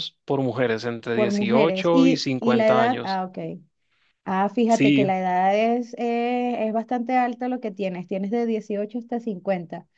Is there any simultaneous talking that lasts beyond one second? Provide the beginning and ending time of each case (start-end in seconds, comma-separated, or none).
1.1-3.2